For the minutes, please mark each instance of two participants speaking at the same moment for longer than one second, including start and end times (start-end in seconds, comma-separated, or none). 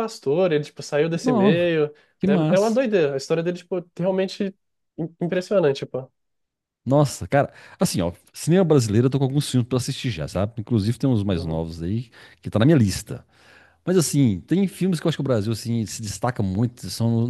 none